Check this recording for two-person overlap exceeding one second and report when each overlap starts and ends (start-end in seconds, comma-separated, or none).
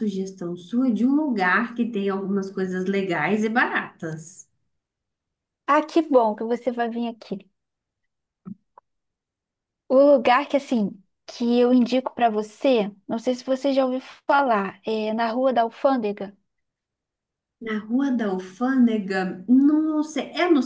none